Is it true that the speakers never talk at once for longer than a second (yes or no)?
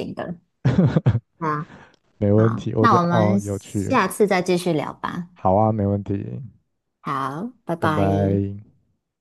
no